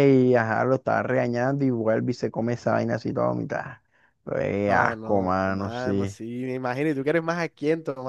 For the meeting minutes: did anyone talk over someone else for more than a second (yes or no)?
yes